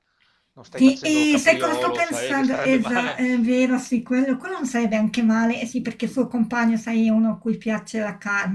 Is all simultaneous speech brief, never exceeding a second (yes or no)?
no